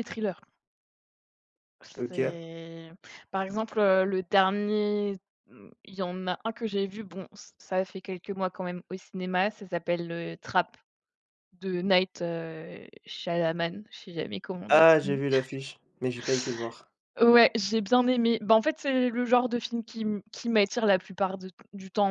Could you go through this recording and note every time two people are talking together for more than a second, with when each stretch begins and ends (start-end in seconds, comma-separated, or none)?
none